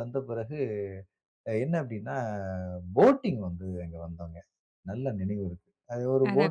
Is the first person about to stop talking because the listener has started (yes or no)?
yes